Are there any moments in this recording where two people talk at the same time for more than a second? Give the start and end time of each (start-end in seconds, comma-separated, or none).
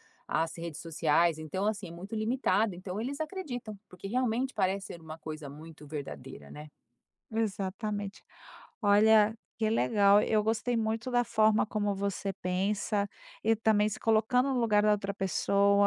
none